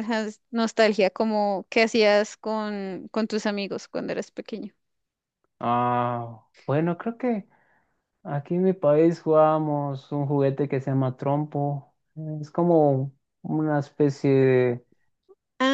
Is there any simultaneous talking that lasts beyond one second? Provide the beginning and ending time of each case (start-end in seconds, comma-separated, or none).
none